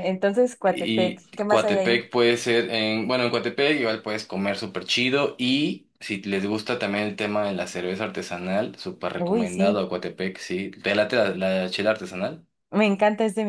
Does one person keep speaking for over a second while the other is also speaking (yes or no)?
yes